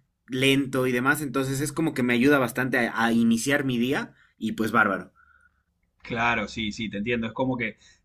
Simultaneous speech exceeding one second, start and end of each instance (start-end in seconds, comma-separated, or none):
none